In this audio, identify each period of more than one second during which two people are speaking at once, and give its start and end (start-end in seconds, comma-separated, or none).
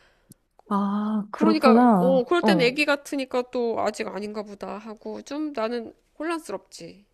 1.3-2.8